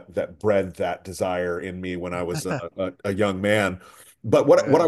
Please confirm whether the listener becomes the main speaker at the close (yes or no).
no